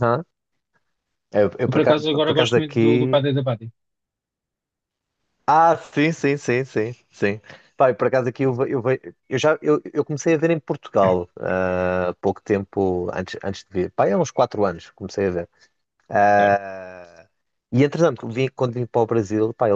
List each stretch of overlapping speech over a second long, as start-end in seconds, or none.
1.6-3.2